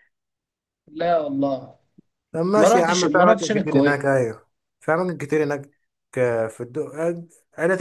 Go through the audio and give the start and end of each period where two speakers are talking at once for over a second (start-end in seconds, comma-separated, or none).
2.6-4.1